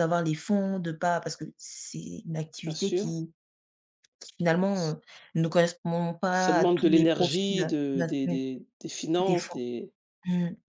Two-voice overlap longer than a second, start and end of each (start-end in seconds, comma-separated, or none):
6.3-7.7